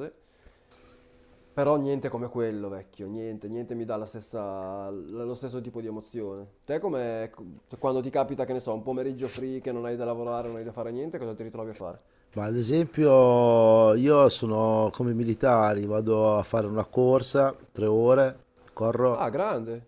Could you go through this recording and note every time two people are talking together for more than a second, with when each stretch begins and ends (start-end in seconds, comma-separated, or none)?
none